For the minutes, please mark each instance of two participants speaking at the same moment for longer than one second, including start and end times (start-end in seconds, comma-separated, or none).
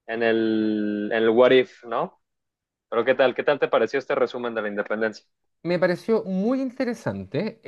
none